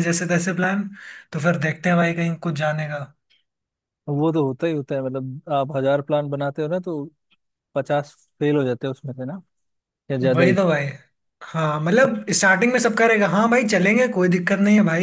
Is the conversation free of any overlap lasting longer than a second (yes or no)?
yes